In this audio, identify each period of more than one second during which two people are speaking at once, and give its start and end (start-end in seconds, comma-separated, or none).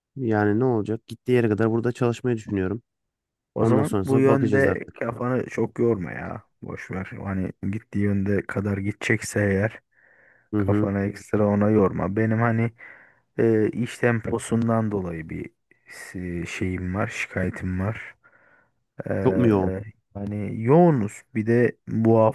3.5-5.0